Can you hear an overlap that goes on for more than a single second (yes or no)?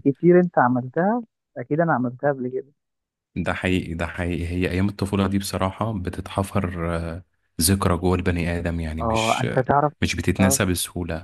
yes